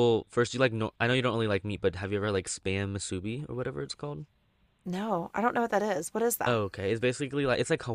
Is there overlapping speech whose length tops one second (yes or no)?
no